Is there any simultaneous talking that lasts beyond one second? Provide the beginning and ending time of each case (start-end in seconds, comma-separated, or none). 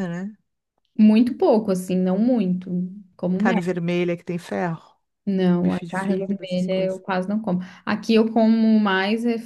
5.6-7.0